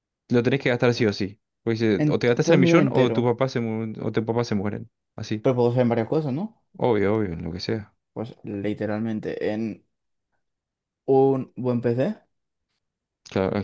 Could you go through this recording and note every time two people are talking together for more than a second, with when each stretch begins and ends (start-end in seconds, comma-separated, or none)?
2.0-3.3